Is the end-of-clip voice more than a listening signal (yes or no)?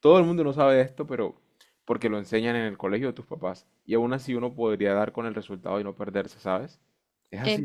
yes